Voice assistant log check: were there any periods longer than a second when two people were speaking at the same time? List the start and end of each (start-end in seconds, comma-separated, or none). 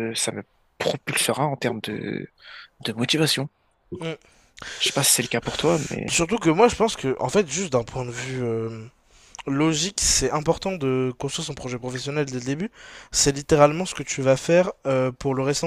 none